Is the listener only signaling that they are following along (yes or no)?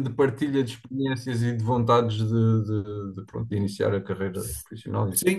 no